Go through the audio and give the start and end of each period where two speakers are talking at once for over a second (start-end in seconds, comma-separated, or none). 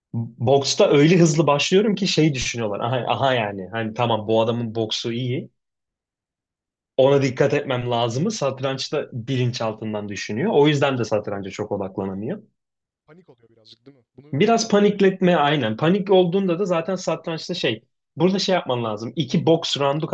14.3-15.6